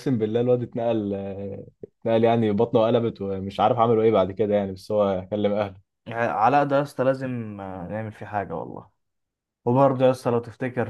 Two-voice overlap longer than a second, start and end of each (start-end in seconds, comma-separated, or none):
none